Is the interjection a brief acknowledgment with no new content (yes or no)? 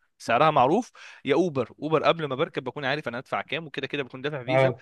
yes